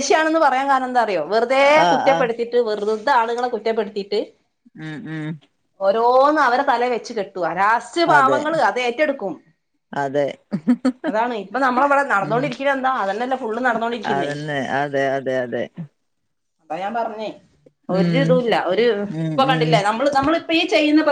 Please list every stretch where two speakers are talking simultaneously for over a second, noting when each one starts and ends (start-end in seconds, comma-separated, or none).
none